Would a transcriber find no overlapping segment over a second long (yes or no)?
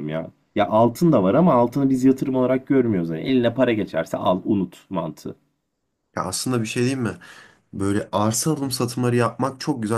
yes